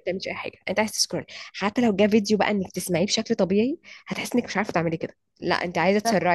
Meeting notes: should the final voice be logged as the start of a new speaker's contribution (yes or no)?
no